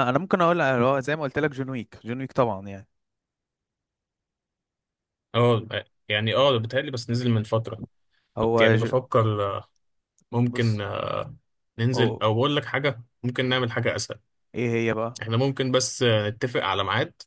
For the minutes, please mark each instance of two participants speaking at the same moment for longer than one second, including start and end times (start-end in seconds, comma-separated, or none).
none